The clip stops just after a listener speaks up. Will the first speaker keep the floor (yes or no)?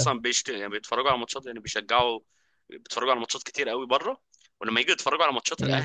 yes